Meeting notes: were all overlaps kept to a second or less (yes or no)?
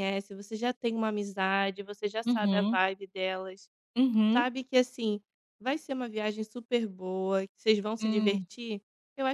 yes